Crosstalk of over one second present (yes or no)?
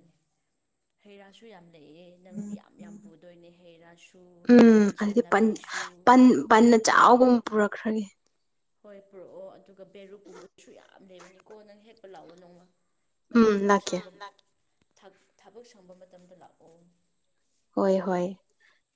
no